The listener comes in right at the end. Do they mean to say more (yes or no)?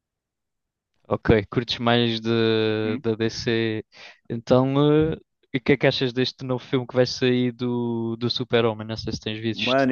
yes